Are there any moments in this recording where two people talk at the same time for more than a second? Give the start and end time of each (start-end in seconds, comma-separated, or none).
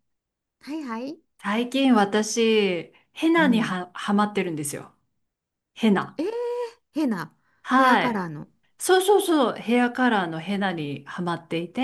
none